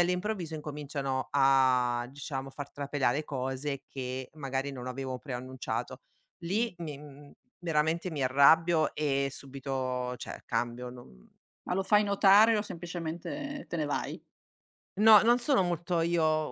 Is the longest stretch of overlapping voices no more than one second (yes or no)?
yes